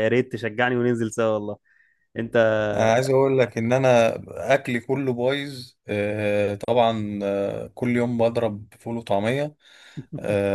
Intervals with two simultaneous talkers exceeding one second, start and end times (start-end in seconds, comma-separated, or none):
none